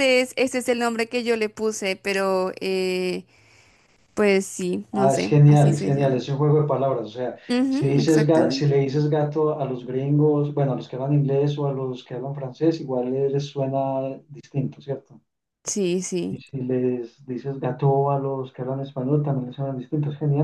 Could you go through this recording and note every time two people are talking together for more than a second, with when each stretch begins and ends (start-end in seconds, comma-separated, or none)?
4.9-6.2, 7.5-8.7